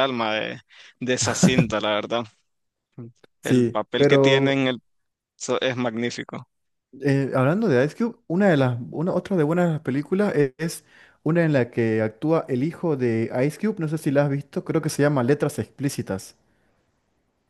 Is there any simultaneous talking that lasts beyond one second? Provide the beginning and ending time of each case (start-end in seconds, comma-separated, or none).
3.4-4.6